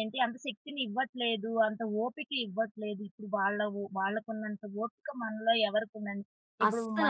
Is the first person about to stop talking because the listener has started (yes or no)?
no